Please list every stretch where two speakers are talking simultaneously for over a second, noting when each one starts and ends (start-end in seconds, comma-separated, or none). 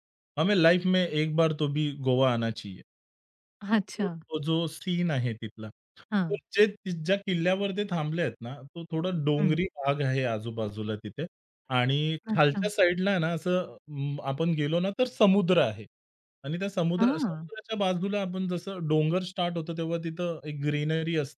none